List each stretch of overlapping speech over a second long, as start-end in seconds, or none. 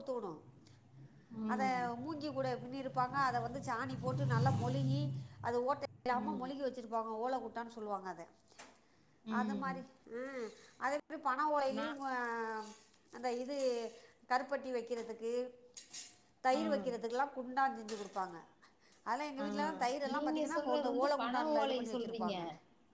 20.1-22.3